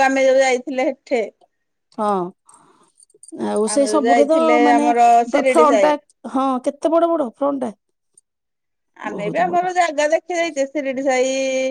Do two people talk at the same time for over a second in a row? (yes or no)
yes